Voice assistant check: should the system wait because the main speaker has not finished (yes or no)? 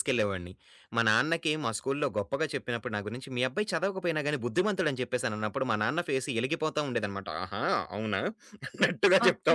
no